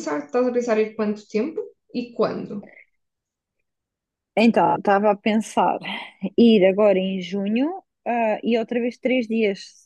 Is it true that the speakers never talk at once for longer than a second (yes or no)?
yes